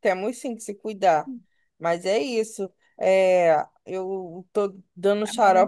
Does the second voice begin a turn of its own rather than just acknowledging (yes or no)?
no